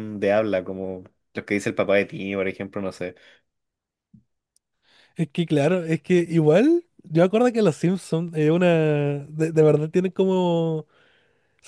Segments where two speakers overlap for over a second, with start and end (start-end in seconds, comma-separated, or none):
none